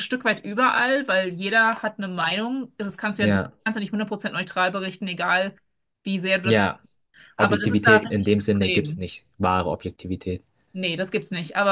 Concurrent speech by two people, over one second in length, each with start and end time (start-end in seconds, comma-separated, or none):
7.4-9.1